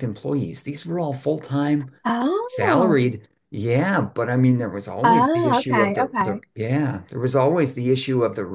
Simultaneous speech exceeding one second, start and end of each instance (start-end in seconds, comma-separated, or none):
5.0-6.4